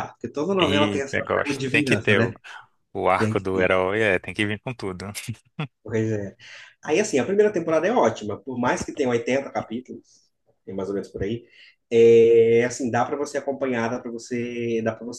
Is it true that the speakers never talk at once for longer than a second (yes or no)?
no